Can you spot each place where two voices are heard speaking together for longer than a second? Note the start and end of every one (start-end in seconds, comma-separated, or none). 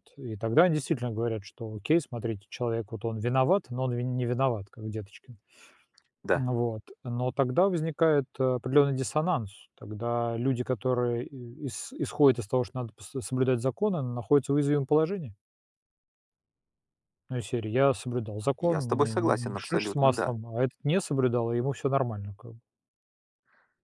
18.6-20.3